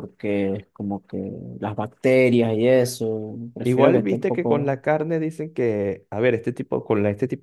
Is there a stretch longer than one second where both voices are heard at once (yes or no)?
yes